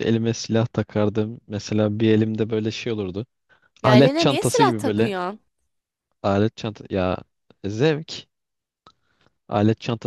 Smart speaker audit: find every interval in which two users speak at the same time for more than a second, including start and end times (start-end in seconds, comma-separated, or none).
3.8-5.1